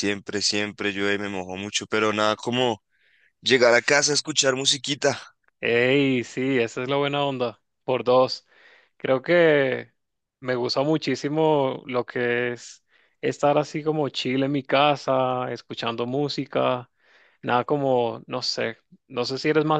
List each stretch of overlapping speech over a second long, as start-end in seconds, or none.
none